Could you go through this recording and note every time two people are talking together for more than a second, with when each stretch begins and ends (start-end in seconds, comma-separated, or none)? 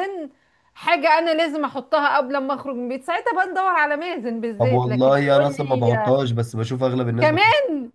4.6-5.9